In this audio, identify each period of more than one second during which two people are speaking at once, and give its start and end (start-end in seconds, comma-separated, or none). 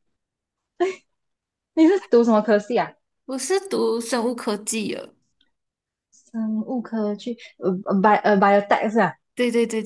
none